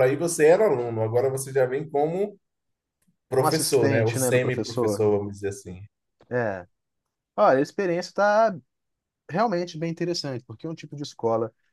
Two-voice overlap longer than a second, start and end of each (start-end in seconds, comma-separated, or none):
3.4-5.1